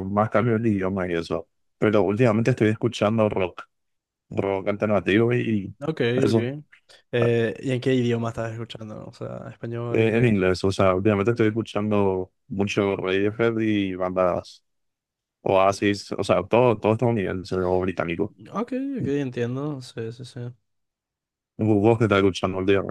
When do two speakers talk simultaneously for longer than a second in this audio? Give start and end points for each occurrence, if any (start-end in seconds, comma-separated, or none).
none